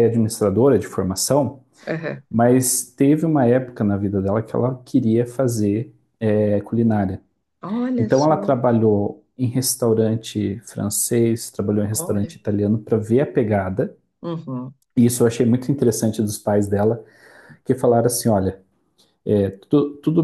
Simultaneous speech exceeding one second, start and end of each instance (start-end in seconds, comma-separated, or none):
none